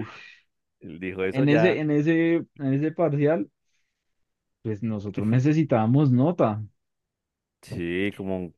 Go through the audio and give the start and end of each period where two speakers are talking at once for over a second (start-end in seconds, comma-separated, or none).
none